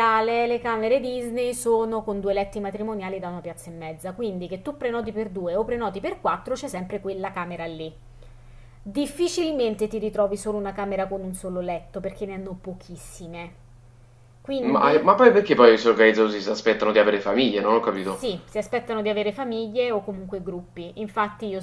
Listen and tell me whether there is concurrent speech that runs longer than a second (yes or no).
no